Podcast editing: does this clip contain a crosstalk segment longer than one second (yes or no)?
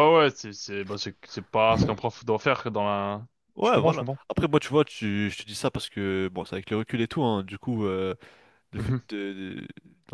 no